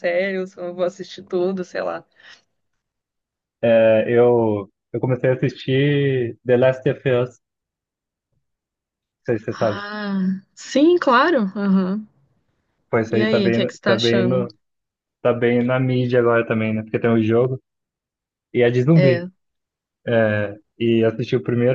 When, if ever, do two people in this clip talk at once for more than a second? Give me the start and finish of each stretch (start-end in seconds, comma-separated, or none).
13.1-14.5